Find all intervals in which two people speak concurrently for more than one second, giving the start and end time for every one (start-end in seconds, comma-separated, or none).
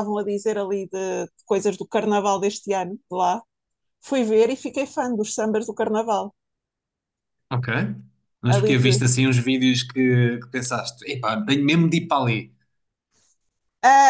none